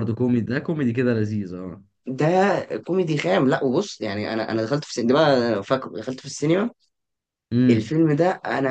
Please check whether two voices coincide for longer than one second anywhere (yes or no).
no